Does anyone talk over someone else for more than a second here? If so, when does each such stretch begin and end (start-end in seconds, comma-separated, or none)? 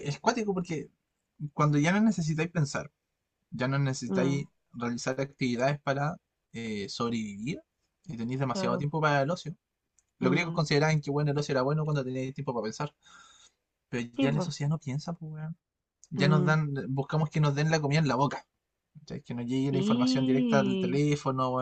19.7-21.0